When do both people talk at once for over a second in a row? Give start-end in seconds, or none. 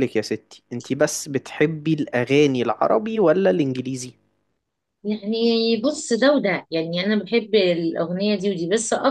none